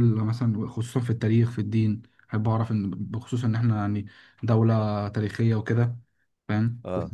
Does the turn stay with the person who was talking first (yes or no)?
yes